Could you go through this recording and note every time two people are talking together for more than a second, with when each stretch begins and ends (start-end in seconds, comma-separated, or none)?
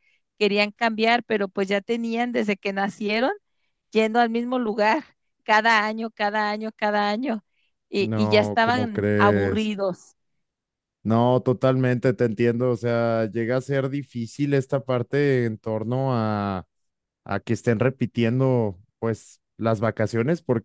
8.0-9.7